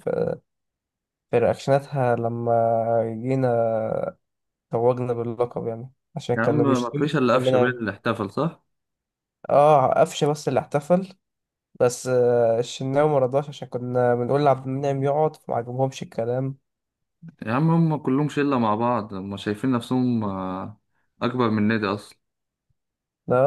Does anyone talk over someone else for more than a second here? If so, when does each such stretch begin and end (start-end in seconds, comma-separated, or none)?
6.4-7.8